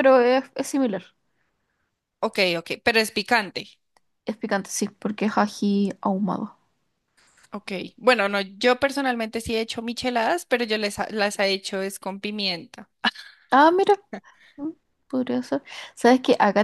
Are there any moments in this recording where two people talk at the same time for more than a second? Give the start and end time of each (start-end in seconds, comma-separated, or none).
none